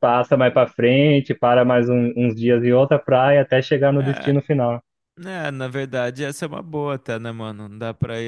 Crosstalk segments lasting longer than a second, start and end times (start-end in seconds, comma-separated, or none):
none